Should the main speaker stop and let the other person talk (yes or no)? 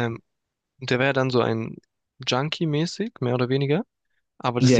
no